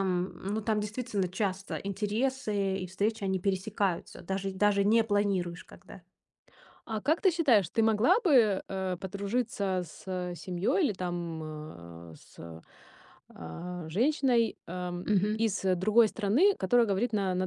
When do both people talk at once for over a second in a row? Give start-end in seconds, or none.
none